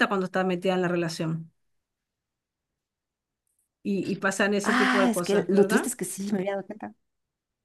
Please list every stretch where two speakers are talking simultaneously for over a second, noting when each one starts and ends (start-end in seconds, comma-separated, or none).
4.6-5.9